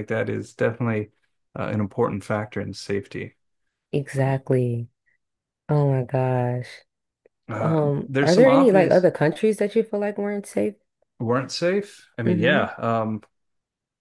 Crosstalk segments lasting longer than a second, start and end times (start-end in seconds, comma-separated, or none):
7.6-9.1